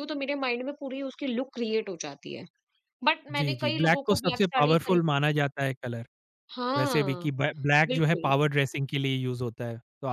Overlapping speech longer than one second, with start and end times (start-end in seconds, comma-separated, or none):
3.3-5.0